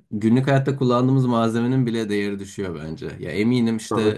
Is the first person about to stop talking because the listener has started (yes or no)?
no